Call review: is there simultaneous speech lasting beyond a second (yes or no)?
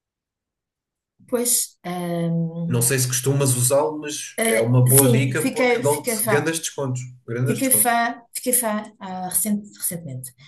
yes